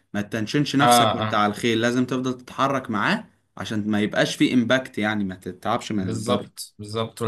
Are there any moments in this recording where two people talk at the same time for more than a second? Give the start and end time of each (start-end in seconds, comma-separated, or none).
none